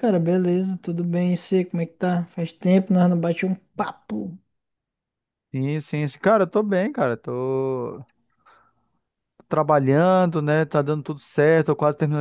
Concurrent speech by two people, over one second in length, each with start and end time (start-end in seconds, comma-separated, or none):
none